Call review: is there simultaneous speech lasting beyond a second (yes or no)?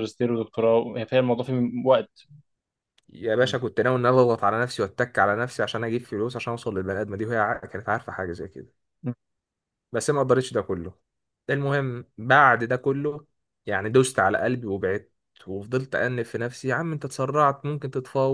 no